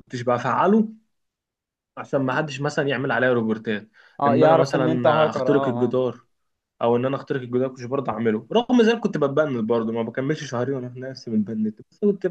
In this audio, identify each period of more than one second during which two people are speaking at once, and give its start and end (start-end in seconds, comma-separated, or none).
4.3-6.0